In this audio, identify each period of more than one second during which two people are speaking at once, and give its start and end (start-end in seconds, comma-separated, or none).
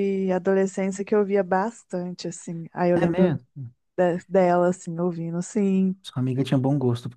none